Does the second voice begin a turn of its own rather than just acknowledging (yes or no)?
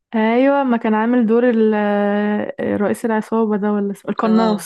yes